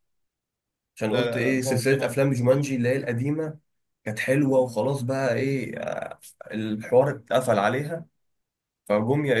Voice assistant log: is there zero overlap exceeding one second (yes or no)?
no